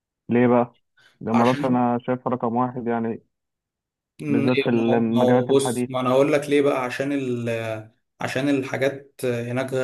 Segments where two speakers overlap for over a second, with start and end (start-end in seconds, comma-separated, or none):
4.3-5.9